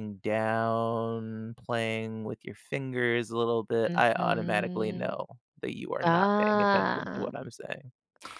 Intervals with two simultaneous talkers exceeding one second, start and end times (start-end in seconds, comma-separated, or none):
3.9-5.1, 6.0-7.3